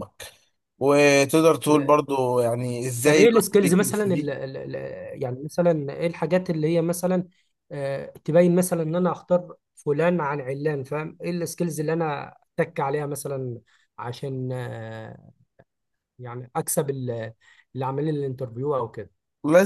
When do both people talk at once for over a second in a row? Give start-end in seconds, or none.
3.0-4.3